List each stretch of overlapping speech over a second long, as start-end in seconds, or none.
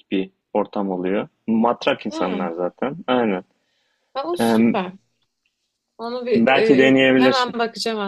6.3-7.6